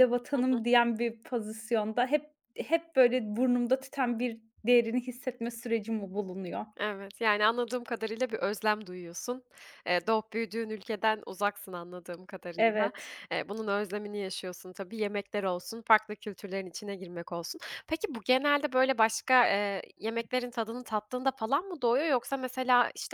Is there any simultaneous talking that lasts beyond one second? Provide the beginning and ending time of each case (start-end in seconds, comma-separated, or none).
none